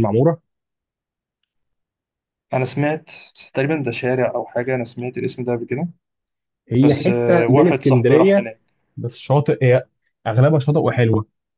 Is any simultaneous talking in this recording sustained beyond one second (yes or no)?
yes